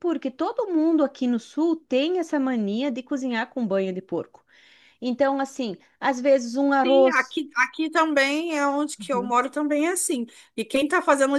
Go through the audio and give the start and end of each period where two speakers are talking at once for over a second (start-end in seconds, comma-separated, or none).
none